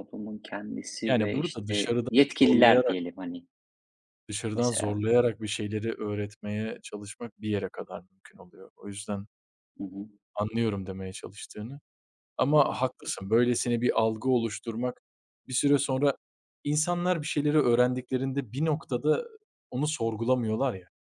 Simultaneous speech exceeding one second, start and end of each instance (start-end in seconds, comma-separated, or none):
1.1-3.0